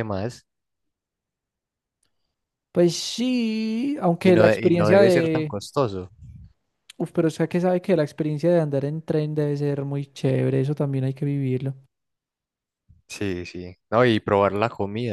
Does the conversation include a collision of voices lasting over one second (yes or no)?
yes